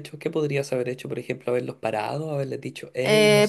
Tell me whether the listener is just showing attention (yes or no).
no